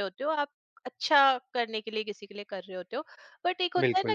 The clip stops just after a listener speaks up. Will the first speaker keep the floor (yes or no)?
yes